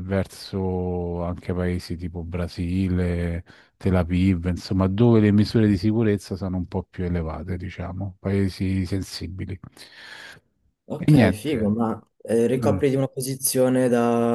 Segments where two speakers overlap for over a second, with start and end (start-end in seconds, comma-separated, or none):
none